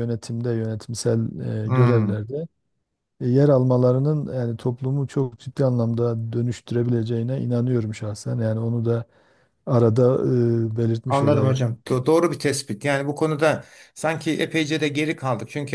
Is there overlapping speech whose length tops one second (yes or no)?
no